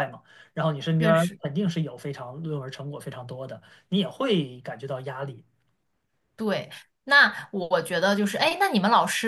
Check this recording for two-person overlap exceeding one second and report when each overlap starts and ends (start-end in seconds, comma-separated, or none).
none